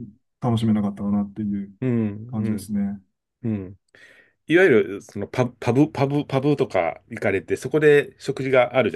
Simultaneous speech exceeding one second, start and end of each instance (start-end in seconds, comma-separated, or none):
none